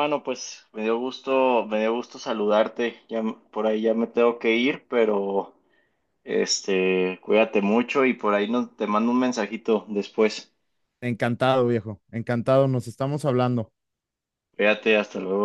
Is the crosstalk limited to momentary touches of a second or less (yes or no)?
yes